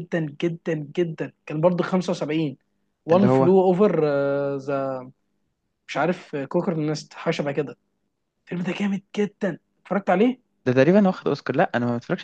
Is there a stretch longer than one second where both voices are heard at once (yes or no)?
no